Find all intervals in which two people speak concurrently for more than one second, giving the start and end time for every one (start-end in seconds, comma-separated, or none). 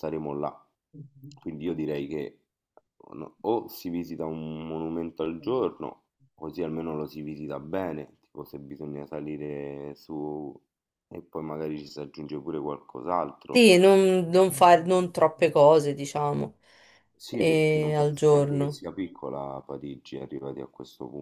17.3-18.8